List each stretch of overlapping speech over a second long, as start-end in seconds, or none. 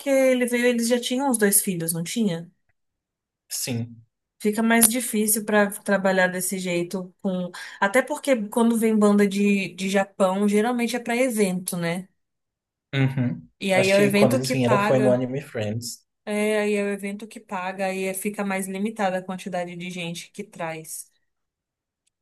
13.6-15.2